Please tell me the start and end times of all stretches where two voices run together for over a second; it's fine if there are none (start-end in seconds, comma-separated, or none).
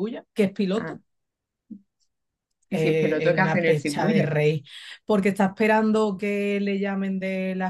2.7-4.3